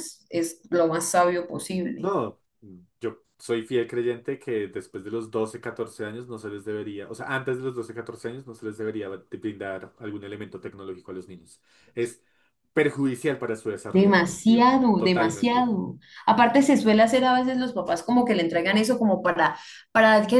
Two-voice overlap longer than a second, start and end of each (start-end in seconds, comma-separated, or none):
13.9-15.7